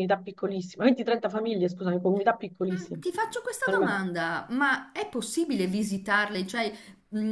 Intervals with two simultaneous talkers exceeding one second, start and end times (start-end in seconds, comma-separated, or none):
none